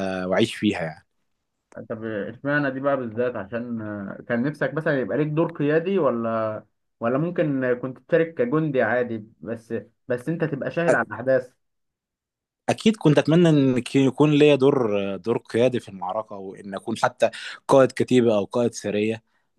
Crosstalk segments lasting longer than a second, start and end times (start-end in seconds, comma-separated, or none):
none